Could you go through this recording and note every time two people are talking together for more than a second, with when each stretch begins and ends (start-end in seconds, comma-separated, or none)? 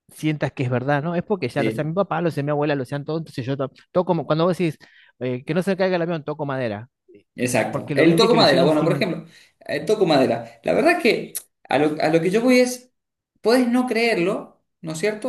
7.7-9.1